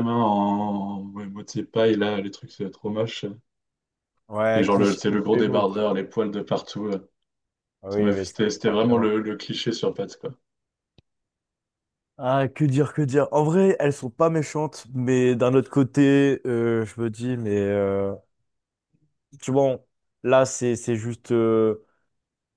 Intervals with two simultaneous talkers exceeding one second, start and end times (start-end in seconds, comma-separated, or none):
4.5-5.8, 7.9-9.2